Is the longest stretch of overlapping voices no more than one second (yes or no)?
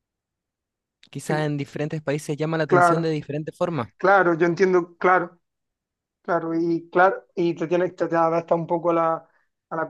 yes